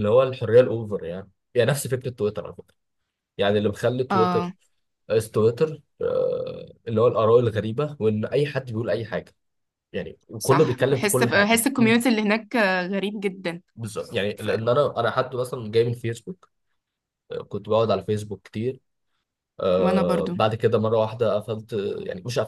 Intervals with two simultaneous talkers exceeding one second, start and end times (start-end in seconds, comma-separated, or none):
10.4-11.6